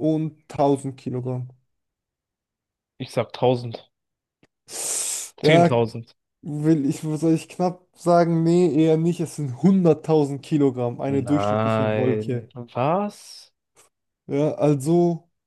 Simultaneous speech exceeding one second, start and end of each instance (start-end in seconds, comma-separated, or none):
11.1-12.5